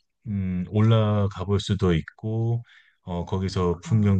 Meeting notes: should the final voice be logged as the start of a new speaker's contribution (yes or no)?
no